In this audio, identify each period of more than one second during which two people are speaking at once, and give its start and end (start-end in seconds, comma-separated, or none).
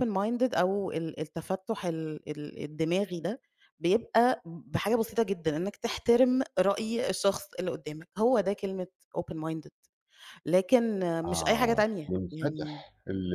11.3-12.8